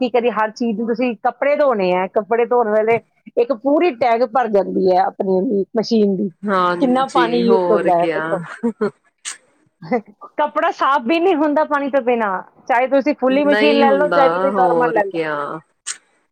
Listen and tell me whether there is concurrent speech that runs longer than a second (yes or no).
yes